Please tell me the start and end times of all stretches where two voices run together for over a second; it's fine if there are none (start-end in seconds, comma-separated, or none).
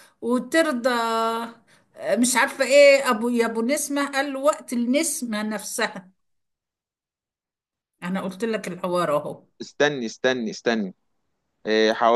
none